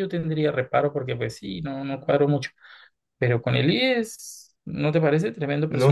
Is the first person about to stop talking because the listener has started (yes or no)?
yes